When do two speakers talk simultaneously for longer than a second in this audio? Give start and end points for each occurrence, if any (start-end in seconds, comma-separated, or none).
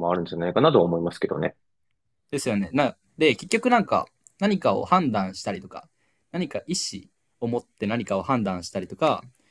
none